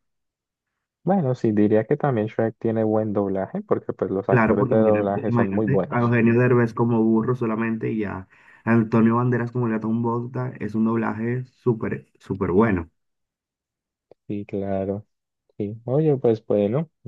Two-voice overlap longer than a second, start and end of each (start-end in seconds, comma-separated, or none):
4.3-6.4